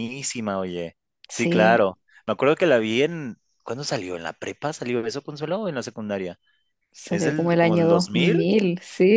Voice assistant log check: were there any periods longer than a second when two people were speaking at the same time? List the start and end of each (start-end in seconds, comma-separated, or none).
7.1-8.5